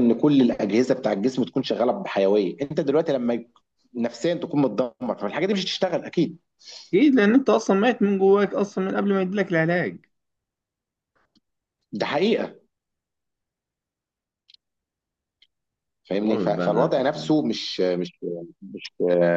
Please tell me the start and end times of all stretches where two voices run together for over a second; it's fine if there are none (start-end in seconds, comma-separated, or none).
16.2-17.6